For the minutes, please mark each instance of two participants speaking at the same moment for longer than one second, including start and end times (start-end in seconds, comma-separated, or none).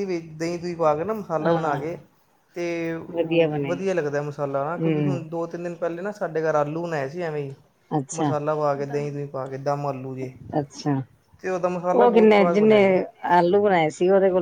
none